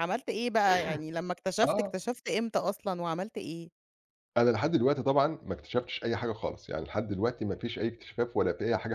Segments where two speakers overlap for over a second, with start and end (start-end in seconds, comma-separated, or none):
none